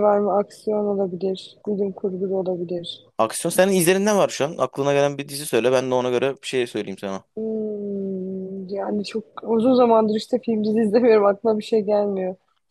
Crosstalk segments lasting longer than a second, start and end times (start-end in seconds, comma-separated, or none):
none